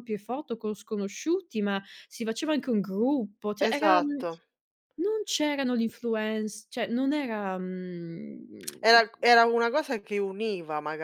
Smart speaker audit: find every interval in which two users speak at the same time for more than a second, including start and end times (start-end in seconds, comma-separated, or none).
none